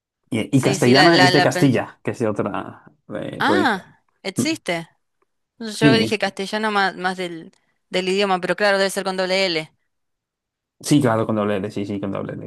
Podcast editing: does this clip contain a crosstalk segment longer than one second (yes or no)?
yes